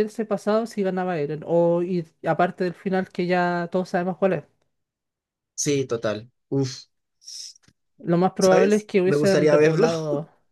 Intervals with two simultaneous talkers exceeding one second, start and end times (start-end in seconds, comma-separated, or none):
8.4-9.9